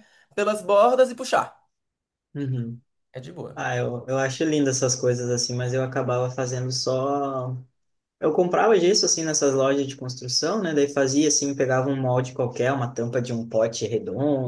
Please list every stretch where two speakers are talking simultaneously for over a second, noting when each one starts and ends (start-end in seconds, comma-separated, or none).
none